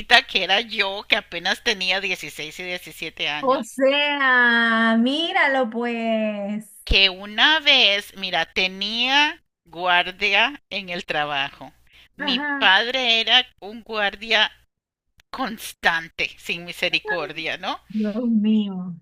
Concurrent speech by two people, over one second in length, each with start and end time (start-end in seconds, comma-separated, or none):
none